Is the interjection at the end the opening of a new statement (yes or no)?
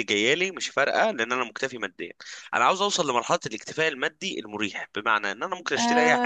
yes